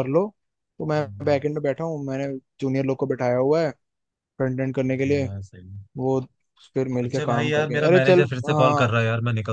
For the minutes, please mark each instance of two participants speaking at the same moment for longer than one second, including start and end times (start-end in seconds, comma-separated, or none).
7.0-9.0